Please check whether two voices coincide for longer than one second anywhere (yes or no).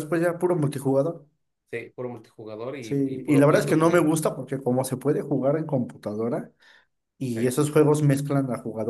yes